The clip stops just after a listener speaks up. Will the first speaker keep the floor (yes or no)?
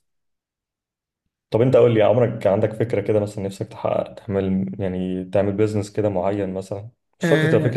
yes